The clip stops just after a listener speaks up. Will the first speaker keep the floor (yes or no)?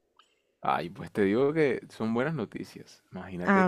yes